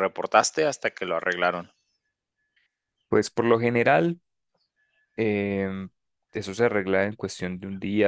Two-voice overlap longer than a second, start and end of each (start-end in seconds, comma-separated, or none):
none